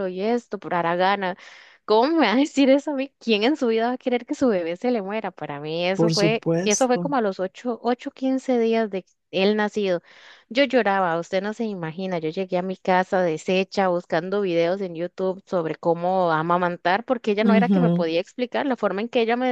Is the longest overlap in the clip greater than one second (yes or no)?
yes